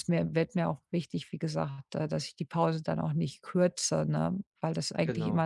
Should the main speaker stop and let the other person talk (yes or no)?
no